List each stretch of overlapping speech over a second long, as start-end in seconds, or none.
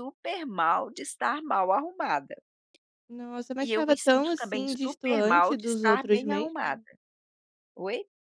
3.6-6.8